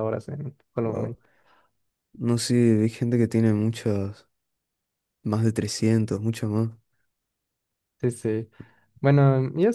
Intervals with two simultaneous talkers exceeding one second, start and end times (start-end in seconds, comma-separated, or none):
none